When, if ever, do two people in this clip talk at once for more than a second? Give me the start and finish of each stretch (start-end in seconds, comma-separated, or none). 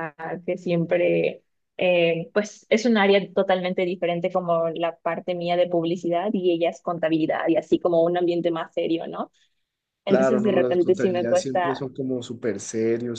10.1-11.8